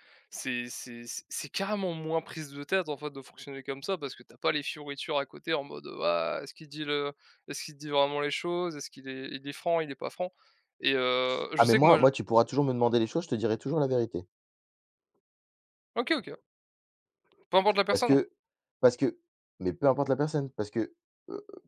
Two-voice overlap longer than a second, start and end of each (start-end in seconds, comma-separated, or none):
none